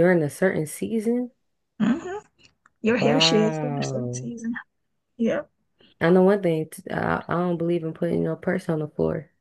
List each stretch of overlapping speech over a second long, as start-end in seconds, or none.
3.0-4.3